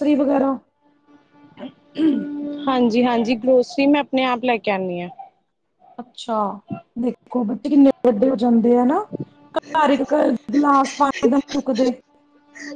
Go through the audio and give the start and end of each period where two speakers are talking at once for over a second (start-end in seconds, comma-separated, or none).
none